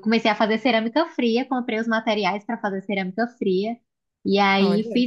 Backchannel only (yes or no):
yes